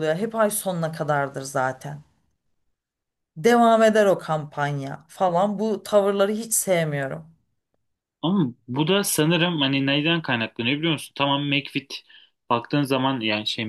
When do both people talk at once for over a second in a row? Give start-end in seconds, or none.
none